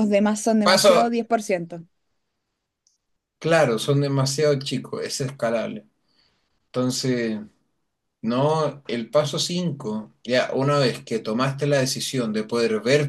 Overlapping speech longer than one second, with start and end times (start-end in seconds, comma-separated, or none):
none